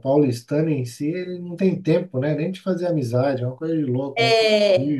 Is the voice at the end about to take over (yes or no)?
yes